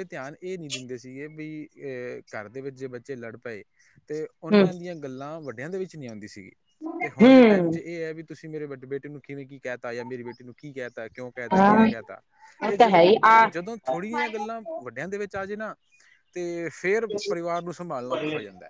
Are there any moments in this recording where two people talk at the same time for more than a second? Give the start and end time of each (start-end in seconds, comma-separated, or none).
none